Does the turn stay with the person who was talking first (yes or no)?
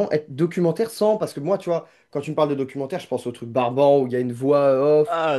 yes